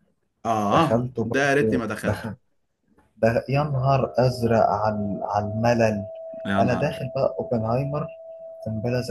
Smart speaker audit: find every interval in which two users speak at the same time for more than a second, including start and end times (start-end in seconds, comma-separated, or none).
0.7-2.3